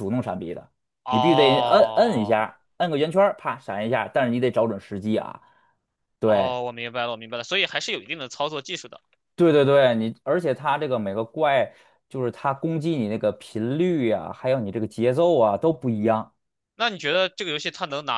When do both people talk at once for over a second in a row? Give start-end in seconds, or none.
1.1-2.4